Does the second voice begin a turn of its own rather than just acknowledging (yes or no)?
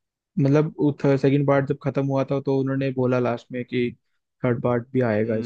yes